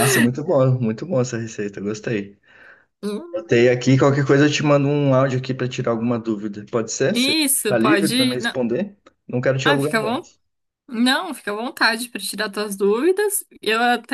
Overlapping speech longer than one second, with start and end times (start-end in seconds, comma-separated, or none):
7.1-8.6